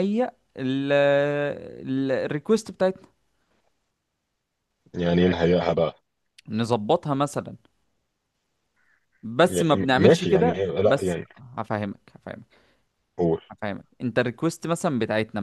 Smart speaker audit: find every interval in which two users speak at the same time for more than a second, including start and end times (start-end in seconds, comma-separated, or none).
9.4-11.3